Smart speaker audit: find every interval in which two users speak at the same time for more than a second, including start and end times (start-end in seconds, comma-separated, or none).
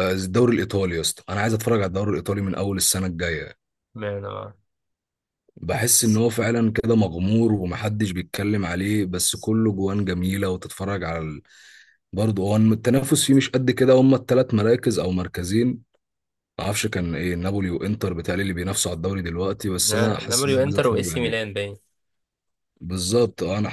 20.3-21.5